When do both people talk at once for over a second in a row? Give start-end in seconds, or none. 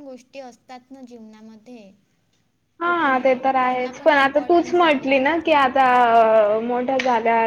2.8-5.7